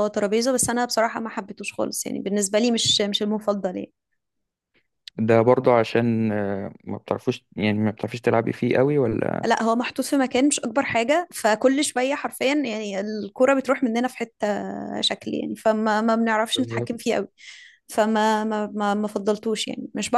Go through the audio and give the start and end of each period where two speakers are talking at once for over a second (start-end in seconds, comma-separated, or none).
none